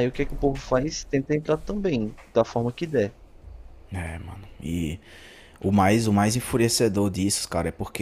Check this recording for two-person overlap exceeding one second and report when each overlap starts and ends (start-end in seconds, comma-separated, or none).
none